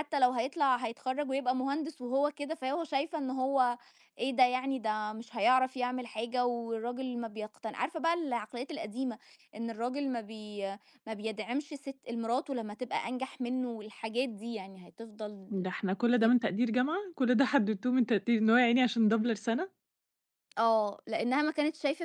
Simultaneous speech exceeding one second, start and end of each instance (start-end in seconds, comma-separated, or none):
none